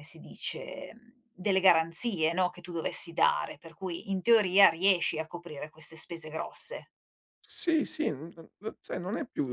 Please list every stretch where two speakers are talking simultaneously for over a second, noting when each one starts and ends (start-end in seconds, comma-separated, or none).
none